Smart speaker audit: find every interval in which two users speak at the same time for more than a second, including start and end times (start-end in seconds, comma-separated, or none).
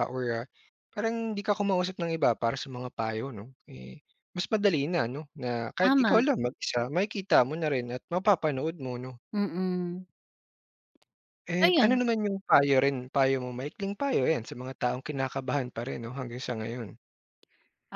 none